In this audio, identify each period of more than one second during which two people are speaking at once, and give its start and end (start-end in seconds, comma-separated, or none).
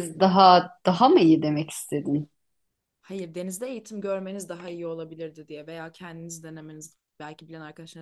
none